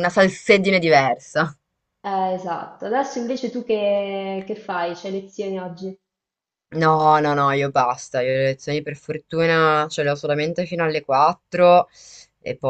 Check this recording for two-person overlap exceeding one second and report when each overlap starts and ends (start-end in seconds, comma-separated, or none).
none